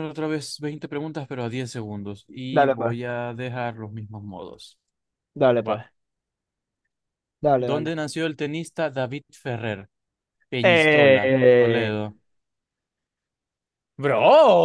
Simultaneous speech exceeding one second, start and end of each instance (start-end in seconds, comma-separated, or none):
10.6-11.9